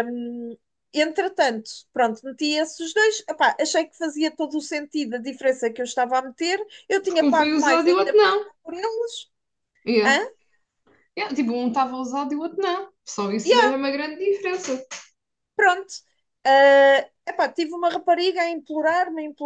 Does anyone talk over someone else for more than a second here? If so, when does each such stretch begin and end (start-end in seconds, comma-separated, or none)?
7.0-8.5